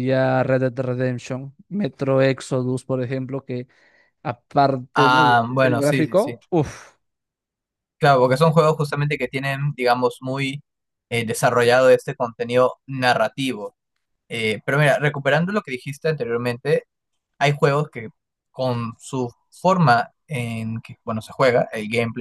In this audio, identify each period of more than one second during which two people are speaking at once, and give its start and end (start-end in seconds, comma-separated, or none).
4.9-6.4